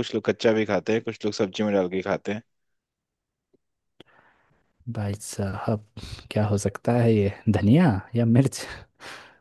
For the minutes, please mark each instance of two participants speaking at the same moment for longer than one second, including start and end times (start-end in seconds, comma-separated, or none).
none